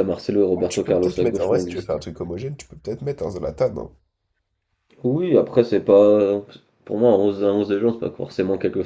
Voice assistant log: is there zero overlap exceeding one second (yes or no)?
no